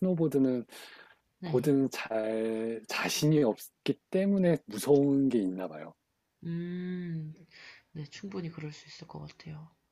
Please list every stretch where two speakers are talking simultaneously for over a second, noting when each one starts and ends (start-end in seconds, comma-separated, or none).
none